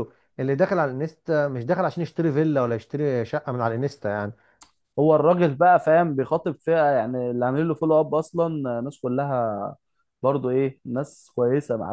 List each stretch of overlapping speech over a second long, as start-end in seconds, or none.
none